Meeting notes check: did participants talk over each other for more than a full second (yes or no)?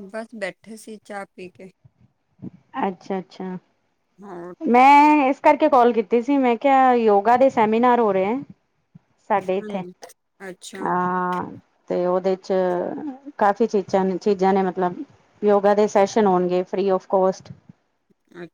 no